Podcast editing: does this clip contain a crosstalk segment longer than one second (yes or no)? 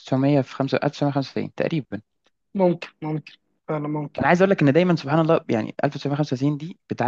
no